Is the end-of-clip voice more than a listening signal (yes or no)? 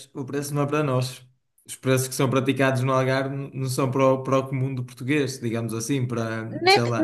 yes